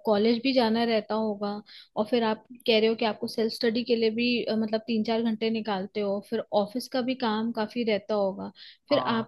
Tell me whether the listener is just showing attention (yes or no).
yes